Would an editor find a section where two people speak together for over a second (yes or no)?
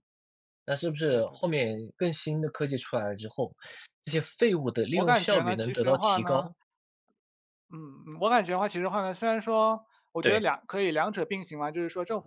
yes